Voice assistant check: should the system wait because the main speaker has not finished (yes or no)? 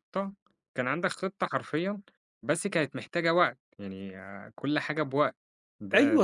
no